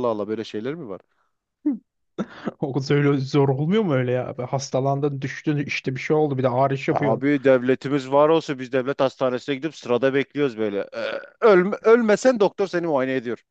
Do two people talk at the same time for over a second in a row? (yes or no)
no